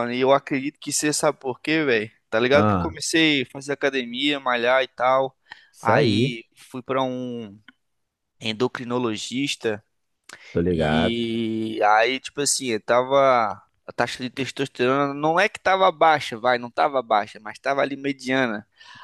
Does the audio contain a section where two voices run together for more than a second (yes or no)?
no